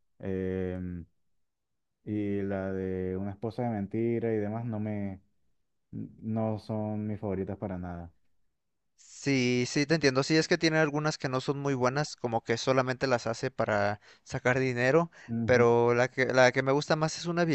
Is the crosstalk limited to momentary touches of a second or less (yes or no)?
yes